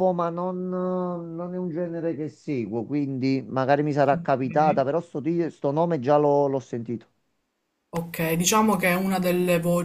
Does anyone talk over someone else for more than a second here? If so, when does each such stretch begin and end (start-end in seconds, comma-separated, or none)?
none